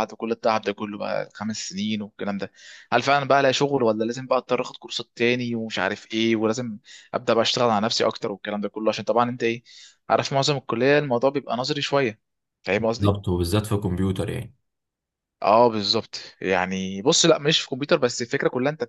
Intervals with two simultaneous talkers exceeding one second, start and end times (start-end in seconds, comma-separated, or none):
none